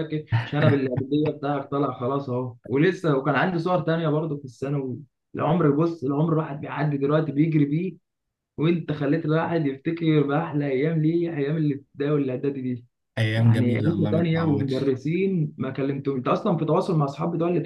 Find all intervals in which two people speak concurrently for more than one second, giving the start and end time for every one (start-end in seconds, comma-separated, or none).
13.3-14.9